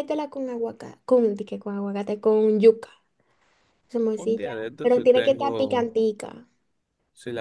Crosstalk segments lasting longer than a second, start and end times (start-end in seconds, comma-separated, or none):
4.2-5.9